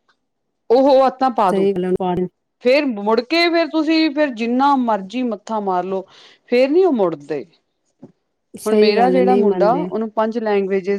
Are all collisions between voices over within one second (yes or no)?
no